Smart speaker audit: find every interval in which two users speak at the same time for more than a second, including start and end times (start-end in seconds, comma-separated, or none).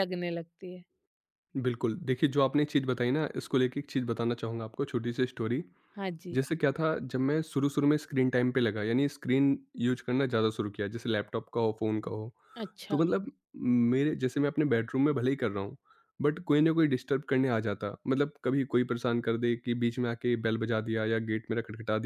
none